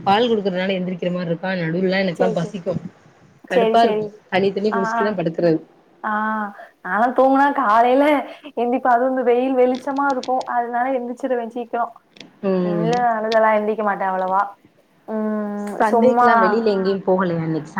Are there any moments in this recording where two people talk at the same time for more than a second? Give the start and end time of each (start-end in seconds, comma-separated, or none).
none